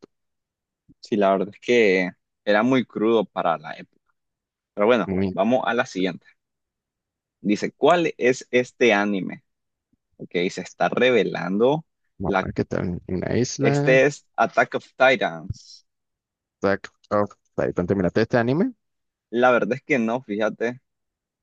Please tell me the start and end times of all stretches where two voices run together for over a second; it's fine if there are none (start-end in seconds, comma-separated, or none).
none